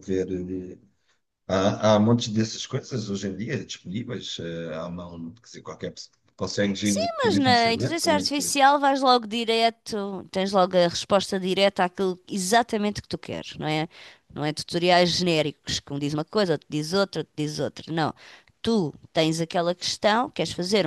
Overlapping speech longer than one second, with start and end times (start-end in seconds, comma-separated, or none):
6.8-8.6